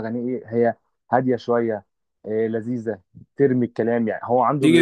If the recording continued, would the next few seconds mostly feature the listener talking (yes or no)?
yes